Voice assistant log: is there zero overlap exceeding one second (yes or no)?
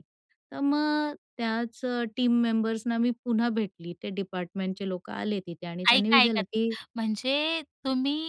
yes